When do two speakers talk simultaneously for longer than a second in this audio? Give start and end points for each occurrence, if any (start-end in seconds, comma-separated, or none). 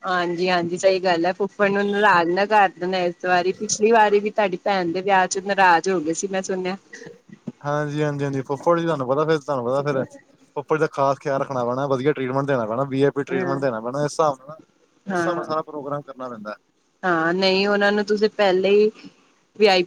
none